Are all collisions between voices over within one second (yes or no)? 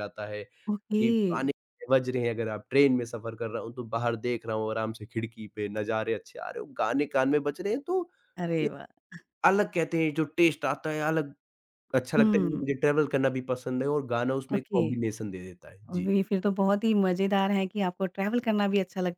yes